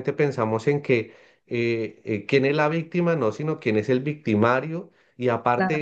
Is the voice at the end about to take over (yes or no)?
no